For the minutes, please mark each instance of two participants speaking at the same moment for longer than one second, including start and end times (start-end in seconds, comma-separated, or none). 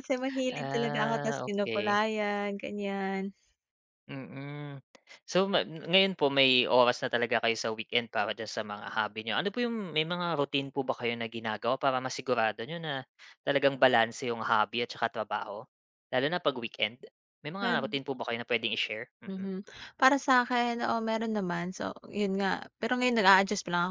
0.5-2.0